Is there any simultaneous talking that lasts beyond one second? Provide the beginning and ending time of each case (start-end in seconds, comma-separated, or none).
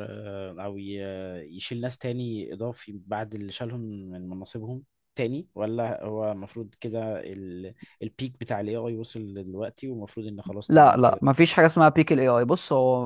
none